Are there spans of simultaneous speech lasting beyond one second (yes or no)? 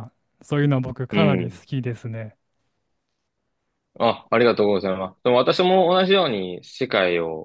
no